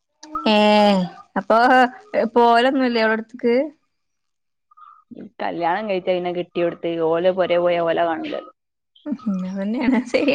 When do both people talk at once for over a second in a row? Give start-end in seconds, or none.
none